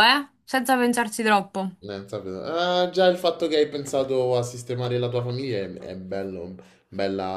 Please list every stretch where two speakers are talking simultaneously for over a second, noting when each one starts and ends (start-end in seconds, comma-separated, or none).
none